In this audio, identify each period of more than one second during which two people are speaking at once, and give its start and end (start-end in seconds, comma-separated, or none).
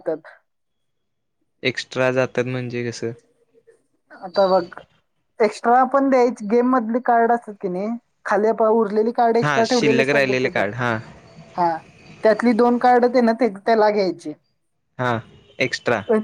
9.4-11.0